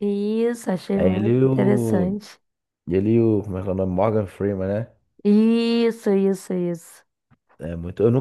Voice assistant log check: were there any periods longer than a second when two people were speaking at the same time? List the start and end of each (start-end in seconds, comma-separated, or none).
0.9-2.2